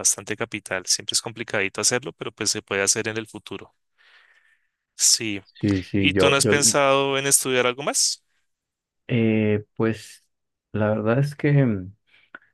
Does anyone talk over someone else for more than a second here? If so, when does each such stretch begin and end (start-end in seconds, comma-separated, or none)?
none